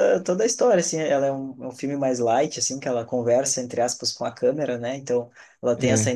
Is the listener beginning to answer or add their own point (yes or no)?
no